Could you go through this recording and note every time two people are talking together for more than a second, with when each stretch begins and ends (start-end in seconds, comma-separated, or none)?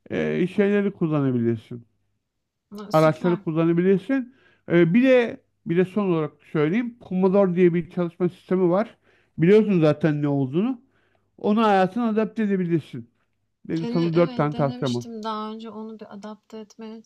13.8-15.0